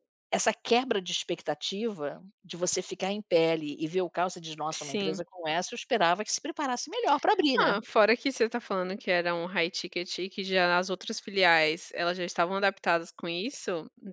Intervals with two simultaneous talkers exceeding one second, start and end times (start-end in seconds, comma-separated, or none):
none